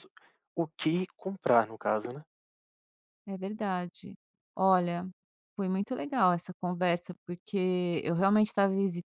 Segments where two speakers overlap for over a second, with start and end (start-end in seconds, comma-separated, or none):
none